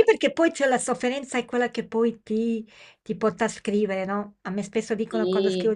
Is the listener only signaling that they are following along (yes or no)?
yes